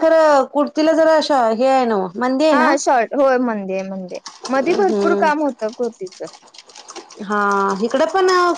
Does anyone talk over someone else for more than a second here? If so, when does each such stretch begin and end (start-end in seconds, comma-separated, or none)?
none